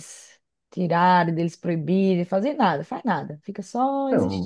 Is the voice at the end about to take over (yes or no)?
yes